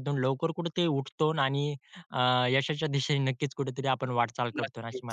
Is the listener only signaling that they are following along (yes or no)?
no